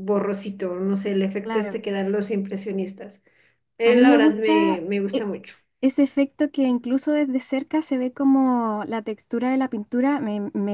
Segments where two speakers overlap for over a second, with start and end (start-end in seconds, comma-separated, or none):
3.8-5.3